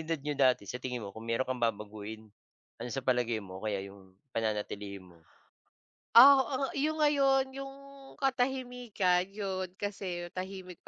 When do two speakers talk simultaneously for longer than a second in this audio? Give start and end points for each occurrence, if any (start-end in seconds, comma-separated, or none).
none